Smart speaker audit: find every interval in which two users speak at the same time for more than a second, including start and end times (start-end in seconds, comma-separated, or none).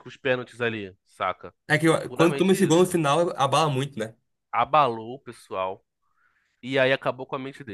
1.7-3.0